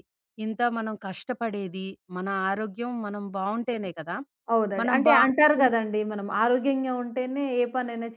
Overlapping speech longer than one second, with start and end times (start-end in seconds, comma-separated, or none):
none